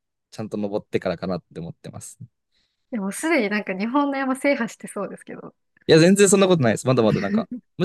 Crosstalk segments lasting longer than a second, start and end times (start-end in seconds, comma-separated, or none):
none